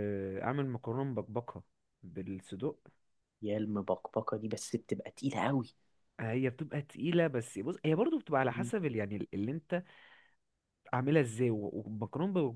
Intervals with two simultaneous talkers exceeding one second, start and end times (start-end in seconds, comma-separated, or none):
none